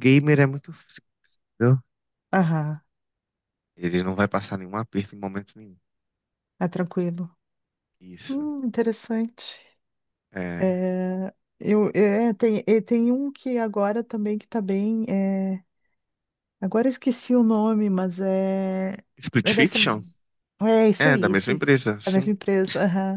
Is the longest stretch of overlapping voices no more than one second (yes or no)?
no